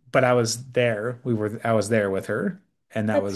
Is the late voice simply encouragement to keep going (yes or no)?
no